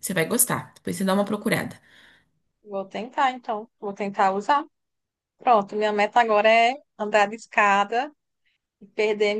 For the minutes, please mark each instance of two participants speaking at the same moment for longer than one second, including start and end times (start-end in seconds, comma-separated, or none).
none